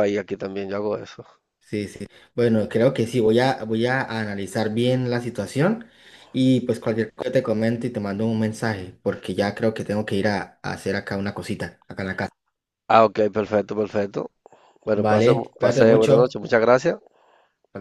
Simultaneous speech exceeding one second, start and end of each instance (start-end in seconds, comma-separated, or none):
14.9-16.3